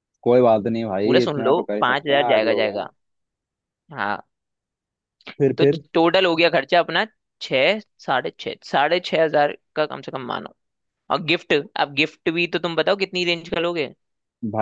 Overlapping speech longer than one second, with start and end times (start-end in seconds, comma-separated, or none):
1.0-2.9